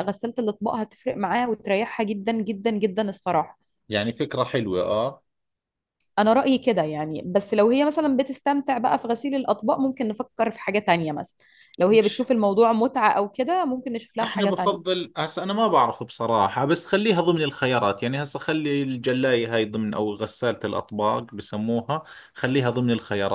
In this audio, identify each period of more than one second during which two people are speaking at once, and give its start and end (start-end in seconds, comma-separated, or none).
none